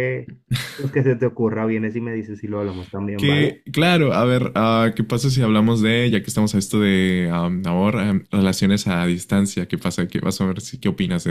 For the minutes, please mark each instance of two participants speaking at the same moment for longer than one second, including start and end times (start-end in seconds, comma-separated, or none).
none